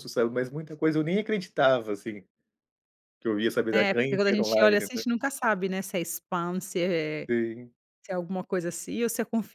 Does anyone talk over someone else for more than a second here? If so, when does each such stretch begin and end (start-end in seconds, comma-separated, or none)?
3.7-5.0